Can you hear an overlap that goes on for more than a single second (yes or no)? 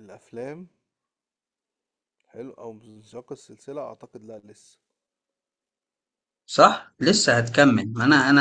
no